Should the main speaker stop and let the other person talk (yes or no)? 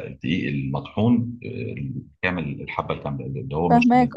no